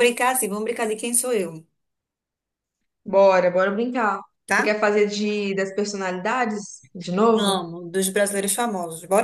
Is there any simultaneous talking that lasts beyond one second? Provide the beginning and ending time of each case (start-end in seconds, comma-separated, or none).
none